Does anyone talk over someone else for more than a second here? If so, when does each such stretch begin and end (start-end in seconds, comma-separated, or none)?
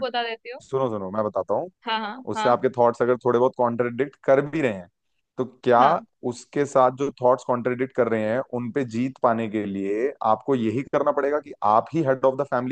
none